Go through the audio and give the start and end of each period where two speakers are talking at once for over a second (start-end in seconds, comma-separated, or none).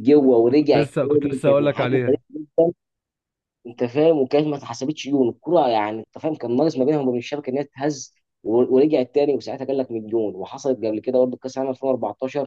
0.6-2.2